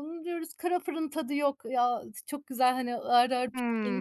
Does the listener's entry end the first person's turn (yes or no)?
yes